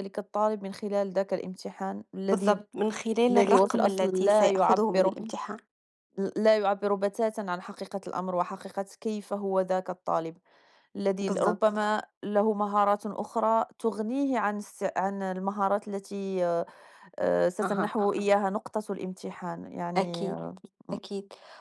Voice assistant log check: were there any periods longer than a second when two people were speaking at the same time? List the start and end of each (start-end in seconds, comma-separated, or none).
3.3-5.2